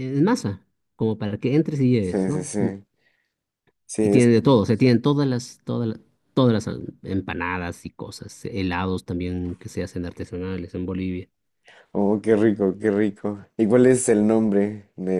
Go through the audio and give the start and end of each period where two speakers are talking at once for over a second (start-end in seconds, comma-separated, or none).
none